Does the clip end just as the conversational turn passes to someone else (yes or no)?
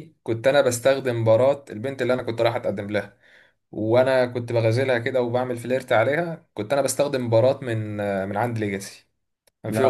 no